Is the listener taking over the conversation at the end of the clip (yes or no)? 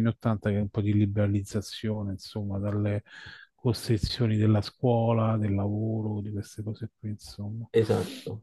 no